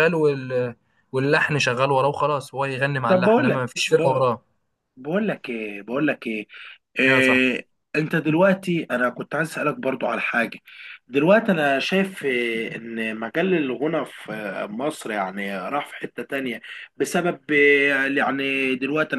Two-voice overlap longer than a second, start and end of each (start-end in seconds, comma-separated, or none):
3.1-4.4